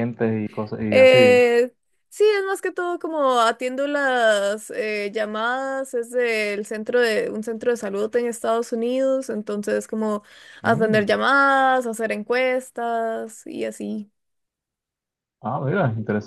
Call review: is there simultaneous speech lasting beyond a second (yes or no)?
no